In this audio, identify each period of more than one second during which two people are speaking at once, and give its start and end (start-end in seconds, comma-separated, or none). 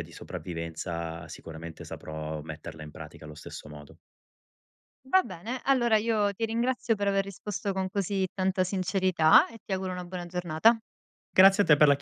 none